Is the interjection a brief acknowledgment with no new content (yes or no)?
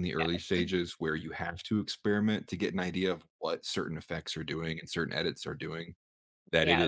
yes